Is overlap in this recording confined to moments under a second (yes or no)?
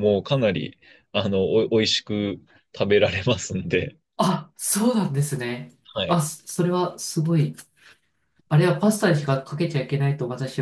yes